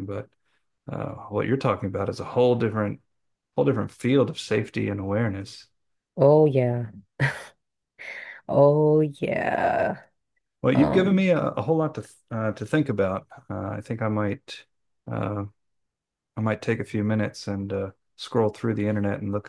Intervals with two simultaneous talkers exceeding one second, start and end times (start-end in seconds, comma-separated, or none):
none